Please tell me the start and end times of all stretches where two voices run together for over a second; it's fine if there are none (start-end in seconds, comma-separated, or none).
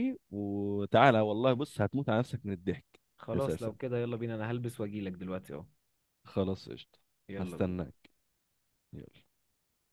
none